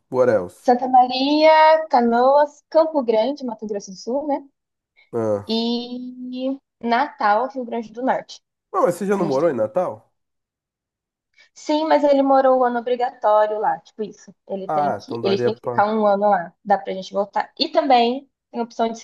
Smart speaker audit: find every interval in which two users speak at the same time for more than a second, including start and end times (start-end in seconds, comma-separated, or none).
14.7-15.9